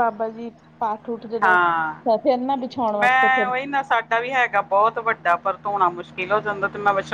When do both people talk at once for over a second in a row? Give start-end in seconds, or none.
none